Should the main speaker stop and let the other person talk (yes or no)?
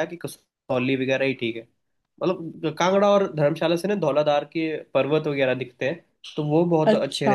no